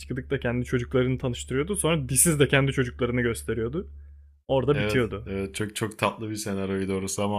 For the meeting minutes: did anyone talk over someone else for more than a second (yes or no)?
no